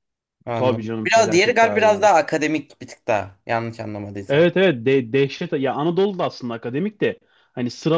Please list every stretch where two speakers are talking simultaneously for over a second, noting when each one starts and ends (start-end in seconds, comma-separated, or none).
0.6-2.1